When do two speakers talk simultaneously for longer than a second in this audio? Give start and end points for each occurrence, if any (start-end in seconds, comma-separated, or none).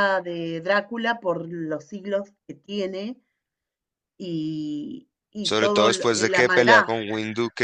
5.4-6.9